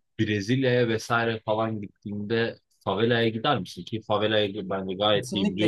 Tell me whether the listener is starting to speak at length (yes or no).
yes